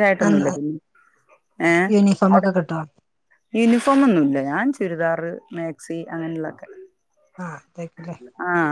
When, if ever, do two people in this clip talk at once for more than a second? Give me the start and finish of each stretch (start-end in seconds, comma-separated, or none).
none